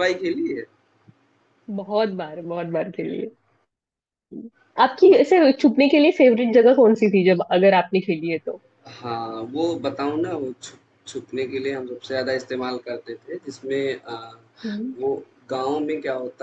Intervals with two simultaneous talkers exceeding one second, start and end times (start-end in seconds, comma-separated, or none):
none